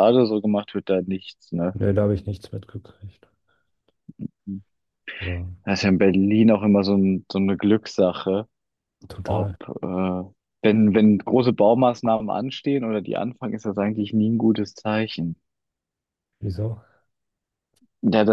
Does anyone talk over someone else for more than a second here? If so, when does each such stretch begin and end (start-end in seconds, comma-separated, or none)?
none